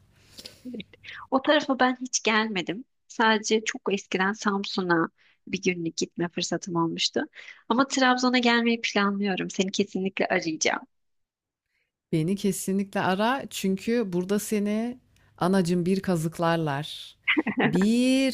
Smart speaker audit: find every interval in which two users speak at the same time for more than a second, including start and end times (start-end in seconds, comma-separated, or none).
none